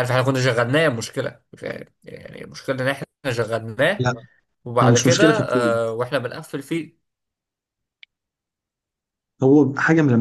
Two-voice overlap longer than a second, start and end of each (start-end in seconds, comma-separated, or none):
none